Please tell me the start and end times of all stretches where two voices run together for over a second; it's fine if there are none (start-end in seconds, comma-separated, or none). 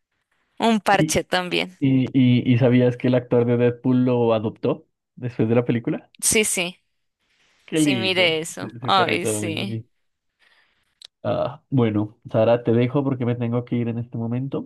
7.7-9.8